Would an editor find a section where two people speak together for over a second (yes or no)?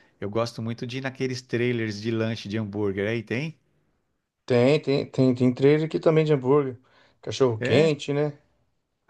no